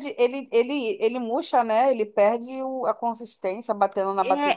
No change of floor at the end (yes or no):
no